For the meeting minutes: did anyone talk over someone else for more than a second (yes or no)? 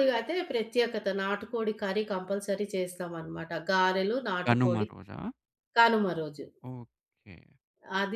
no